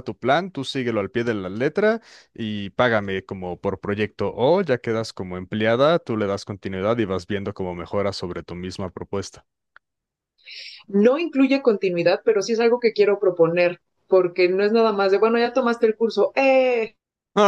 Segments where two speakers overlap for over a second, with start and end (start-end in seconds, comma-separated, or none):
none